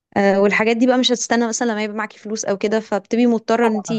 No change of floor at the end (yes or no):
no